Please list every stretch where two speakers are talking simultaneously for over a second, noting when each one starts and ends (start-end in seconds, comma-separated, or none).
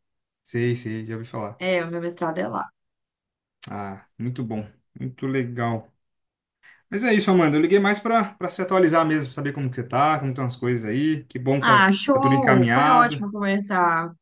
11.6-13.2